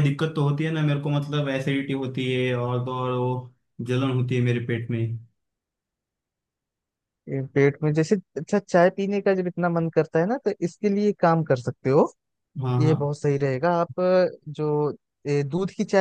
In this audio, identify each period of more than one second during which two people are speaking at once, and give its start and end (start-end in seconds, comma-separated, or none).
none